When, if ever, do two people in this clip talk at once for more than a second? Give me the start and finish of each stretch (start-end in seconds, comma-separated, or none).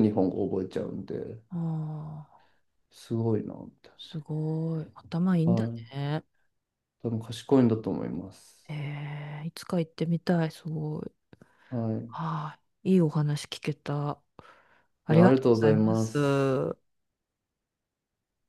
15.1-16.6